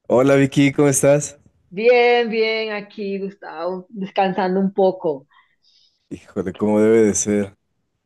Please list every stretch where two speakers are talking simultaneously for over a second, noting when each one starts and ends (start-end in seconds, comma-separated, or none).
none